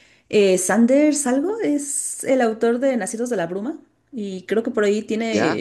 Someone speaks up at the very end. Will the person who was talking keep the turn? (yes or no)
yes